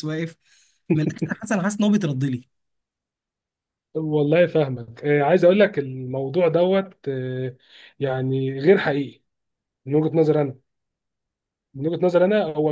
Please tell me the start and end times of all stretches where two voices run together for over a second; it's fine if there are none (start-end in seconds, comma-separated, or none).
none